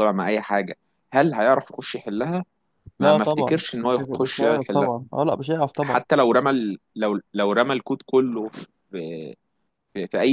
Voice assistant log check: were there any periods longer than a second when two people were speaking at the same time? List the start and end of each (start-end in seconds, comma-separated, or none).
3.0-4.9